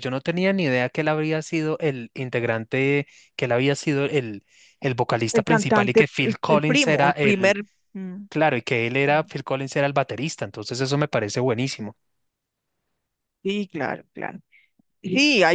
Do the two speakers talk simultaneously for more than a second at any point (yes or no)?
yes